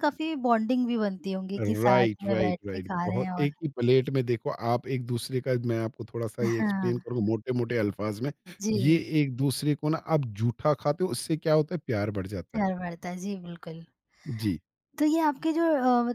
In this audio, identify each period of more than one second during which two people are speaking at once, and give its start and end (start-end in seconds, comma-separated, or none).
1.6-3.5